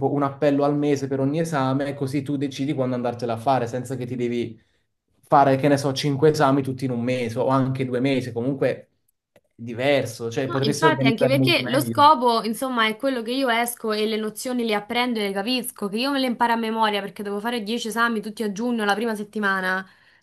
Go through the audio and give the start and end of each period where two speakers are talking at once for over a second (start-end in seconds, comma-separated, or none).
10.4-12.0